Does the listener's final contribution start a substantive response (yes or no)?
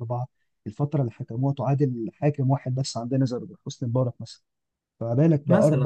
no